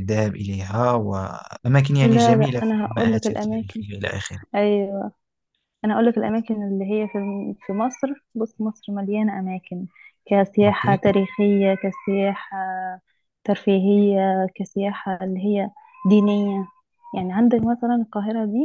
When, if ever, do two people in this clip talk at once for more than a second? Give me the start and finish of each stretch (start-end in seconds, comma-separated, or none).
2.0-3.8